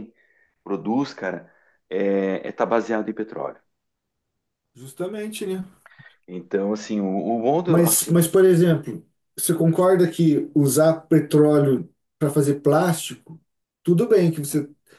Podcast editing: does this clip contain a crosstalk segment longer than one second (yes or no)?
no